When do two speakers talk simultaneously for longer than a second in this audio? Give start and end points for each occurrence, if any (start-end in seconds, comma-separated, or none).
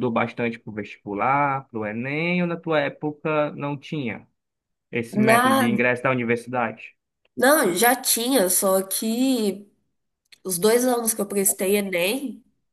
none